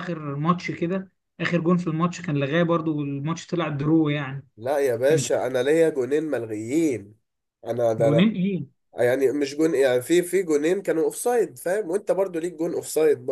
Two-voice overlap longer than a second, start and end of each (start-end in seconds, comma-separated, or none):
none